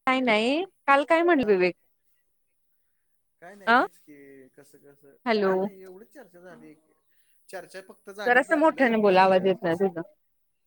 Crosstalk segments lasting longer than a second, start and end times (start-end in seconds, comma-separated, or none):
8.2-9.9